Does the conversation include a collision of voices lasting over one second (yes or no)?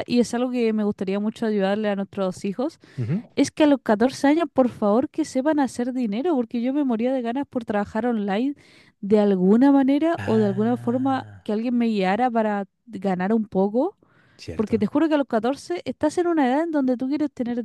yes